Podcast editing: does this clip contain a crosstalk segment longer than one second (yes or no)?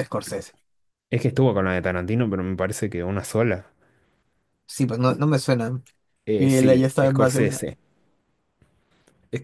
yes